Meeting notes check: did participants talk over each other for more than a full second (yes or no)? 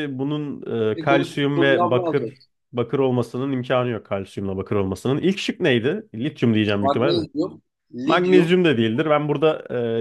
yes